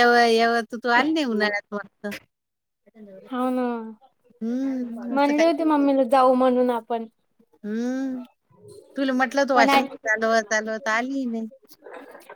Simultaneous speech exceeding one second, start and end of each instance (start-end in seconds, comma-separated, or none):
none